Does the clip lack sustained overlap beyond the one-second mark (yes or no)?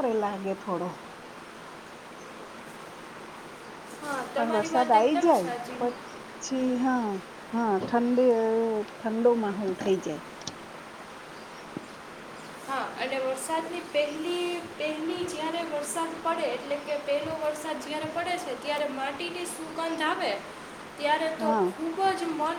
no